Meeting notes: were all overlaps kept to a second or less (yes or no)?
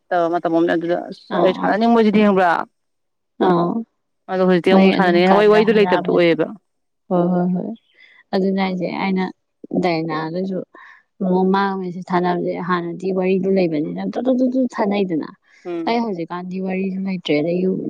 no